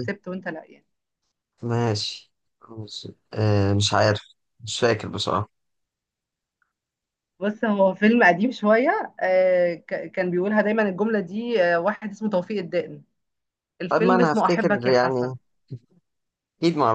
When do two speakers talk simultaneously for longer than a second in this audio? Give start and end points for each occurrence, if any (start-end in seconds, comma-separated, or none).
13.9-15.3